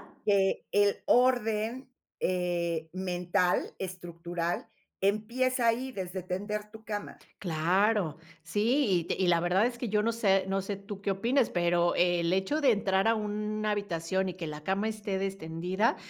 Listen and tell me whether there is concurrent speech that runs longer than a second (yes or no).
no